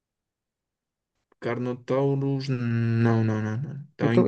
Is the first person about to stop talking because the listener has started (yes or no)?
yes